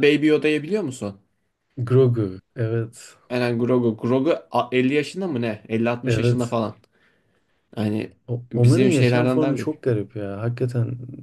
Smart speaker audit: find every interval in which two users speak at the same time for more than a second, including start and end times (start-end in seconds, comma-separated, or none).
8.5-9.8